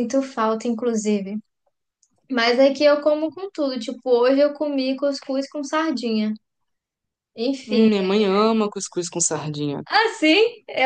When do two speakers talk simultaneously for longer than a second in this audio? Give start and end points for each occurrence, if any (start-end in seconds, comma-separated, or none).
none